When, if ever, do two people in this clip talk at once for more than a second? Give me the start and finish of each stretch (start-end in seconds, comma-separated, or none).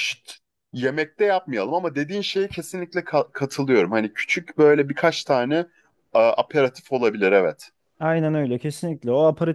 none